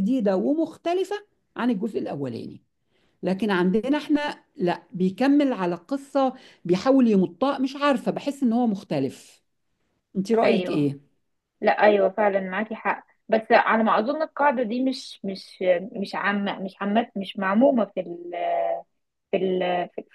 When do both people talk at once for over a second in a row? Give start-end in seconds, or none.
none